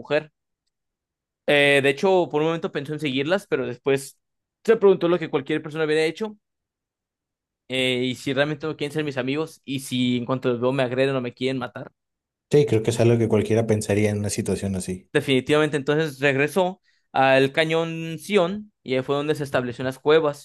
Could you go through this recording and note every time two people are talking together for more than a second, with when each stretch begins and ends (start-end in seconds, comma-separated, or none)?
none